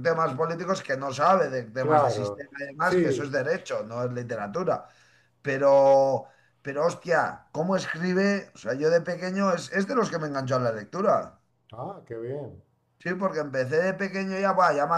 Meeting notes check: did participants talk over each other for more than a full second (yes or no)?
yes